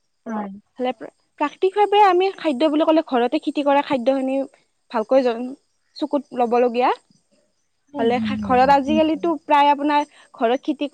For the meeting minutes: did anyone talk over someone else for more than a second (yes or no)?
yes